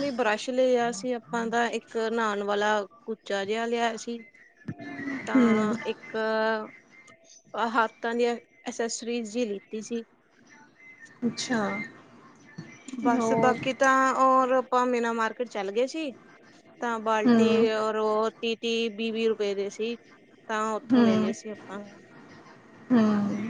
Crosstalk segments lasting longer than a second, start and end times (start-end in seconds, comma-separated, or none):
none